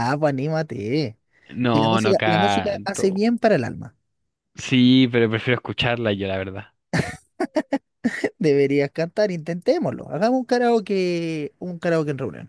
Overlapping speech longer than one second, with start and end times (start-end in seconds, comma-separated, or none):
1.7-3.2